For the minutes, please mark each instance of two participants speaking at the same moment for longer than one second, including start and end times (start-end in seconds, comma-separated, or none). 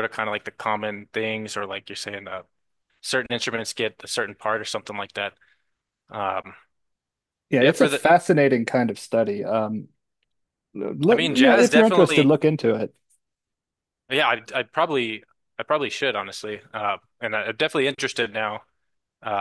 11.1-12.4